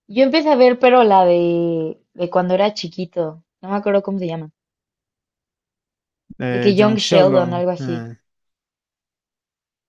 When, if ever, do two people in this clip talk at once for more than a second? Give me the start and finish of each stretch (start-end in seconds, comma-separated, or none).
6.5-8.1